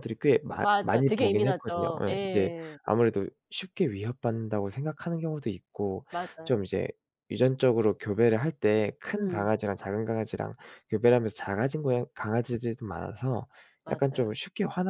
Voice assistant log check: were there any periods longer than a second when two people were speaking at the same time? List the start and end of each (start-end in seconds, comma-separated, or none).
0.6-2.8